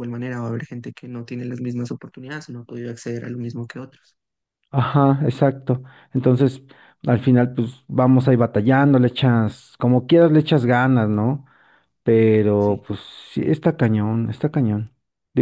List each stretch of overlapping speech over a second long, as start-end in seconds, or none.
none